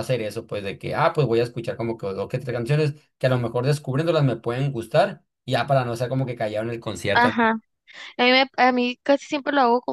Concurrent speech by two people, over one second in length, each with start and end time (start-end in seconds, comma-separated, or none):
none